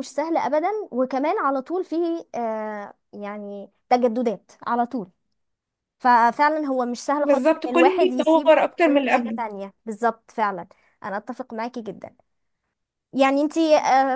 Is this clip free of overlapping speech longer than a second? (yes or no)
no